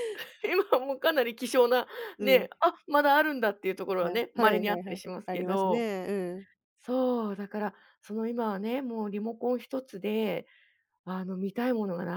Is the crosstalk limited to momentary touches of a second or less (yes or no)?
no